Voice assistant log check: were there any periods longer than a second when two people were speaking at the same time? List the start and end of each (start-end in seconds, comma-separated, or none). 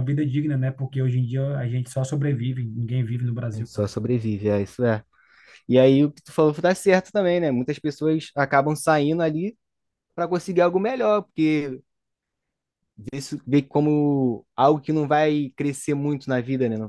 none